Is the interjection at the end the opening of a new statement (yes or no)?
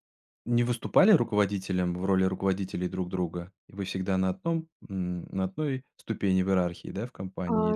yes